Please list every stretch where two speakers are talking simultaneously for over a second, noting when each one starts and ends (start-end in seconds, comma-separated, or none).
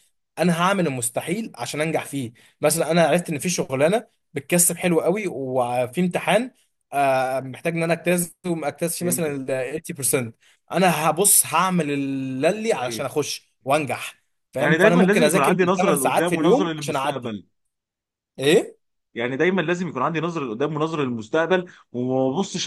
14.6-17.4